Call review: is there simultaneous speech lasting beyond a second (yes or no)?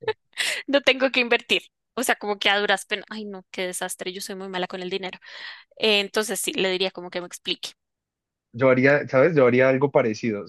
no